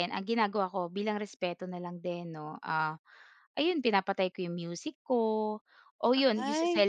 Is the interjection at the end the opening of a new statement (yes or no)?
no